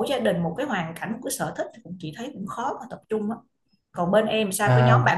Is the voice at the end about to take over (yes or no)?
no